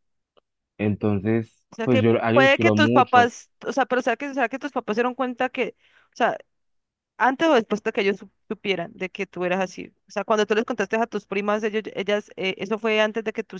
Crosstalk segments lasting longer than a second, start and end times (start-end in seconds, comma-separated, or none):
1.7-3.3